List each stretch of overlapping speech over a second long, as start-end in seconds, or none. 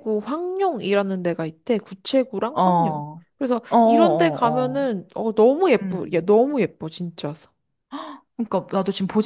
3.7-4.9